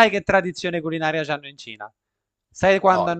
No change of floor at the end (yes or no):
yes